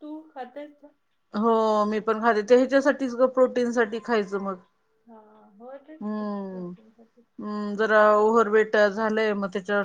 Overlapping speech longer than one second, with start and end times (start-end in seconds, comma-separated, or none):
none